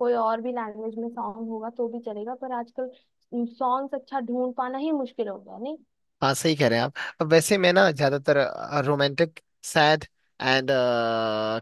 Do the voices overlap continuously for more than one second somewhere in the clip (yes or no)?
no